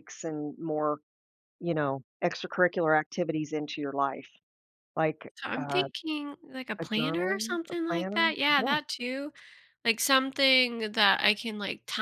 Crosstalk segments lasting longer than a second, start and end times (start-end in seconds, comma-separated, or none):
6.8-8.8